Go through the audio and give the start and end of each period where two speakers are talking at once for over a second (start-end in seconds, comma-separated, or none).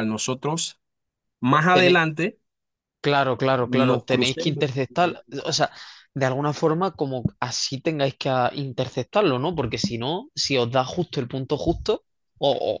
3.6-5.6